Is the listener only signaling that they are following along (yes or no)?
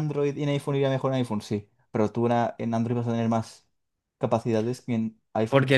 no